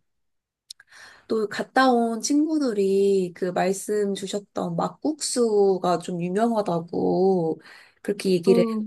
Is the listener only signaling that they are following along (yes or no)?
yes